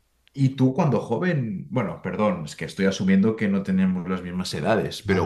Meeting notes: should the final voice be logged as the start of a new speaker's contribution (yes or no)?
no